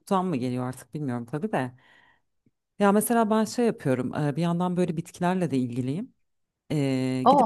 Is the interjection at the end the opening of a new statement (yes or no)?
no